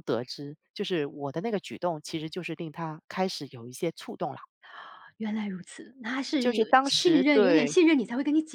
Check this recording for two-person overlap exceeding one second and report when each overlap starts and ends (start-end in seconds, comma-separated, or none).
6.4-7.8